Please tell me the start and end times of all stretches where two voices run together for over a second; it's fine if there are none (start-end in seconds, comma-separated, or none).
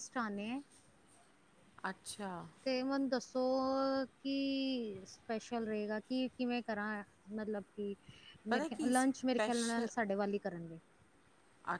8.5-9.9